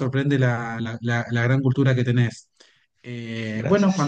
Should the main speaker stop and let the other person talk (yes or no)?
no